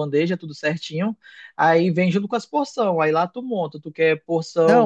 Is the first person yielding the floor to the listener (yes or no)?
yes